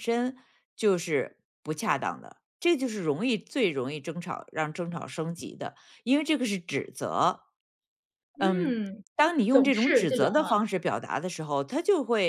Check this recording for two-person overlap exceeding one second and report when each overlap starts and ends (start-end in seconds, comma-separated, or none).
9.5-10.7